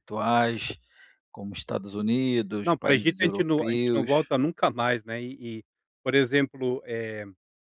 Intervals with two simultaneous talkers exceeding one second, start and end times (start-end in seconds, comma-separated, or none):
2.6-4.3